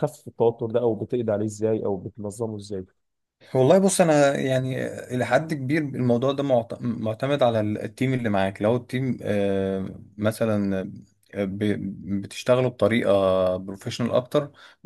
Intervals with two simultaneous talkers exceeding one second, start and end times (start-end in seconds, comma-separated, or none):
none